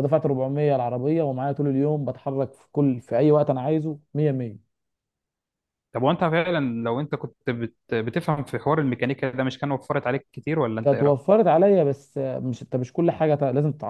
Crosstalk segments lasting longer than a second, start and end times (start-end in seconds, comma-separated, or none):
none